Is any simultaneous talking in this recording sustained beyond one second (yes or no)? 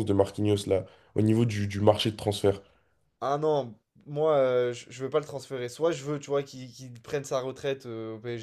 no